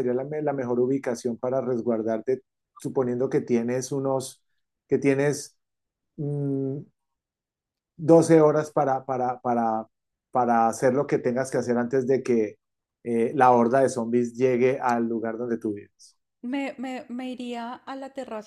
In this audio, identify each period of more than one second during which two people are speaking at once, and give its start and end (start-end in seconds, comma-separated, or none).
none